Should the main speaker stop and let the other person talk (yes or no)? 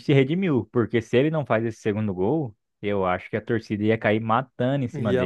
yes